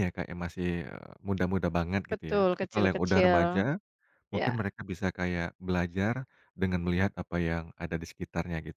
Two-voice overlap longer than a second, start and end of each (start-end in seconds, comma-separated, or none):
2.1-3.6